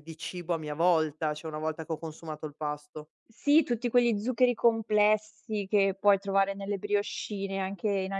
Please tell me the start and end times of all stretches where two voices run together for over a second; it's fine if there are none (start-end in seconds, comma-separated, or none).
none